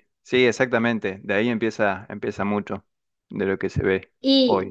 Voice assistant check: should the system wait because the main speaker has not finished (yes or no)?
no